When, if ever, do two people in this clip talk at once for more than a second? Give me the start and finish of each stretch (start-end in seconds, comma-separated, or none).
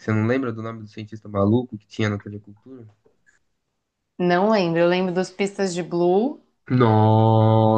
none